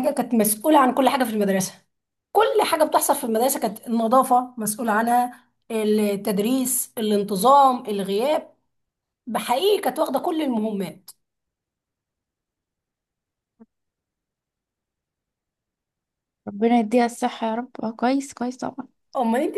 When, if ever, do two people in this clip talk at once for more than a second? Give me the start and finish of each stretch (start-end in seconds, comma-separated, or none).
none